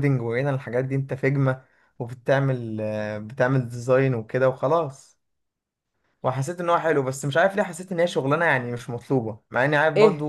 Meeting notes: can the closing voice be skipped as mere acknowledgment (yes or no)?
yes